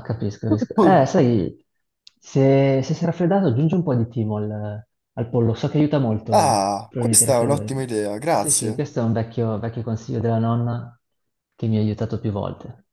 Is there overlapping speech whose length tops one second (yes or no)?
yes